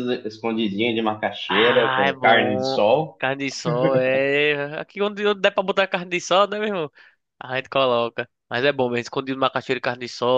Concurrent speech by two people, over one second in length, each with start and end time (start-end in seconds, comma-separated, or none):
1.5-3.2